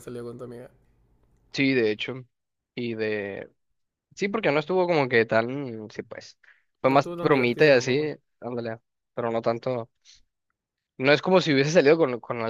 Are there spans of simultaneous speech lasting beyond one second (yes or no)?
yes